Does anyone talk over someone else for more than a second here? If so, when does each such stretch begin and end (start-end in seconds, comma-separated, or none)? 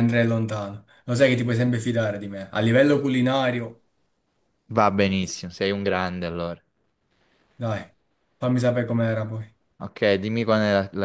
none